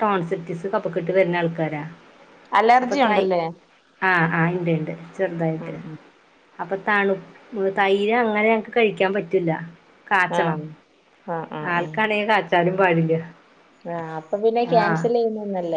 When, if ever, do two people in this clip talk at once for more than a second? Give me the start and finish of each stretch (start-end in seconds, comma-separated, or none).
none